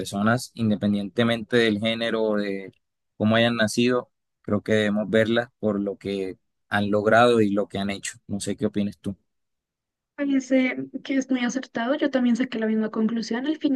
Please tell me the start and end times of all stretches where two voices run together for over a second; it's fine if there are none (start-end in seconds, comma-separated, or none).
none